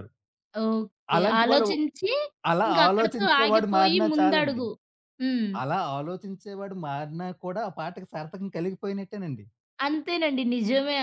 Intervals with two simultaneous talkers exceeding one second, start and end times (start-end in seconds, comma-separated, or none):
2.7-4.6